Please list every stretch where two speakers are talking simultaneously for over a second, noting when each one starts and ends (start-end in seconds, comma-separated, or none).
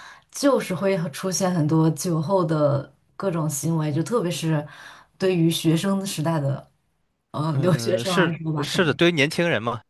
7.5-9.0